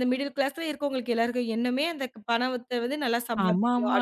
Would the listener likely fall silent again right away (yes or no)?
no